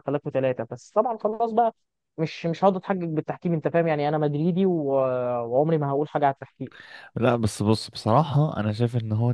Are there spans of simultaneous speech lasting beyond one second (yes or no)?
no